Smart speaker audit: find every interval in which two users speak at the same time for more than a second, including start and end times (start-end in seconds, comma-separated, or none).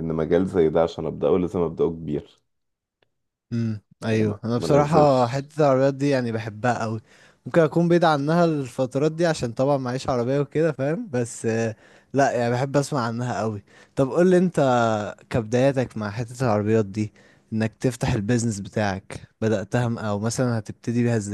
4.1-5.5